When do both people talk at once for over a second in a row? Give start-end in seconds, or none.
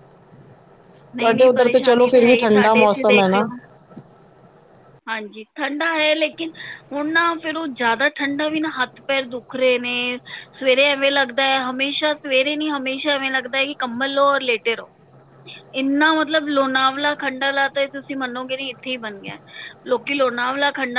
1.2-3.5